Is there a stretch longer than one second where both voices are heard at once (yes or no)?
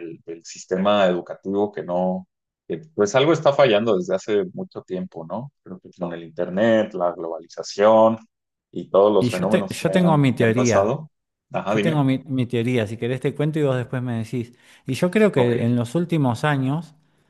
yes